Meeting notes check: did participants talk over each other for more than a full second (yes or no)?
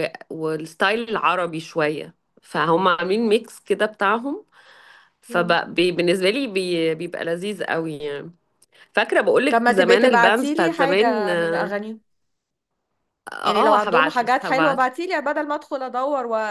yes